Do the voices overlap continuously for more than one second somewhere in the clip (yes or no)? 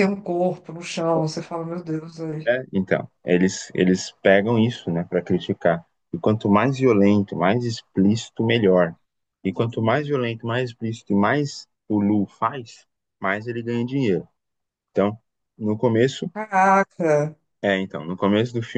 no